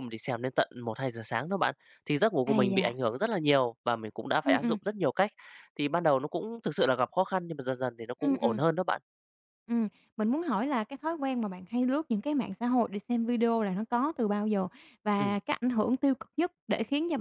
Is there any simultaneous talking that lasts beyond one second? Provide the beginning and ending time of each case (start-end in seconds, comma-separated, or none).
none